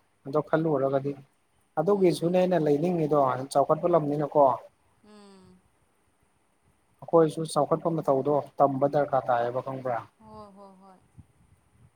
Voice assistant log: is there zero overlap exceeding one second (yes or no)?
yes